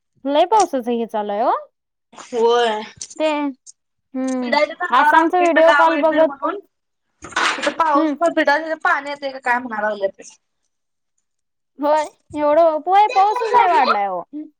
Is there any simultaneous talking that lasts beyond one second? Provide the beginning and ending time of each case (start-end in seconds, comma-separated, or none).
4.4-6.3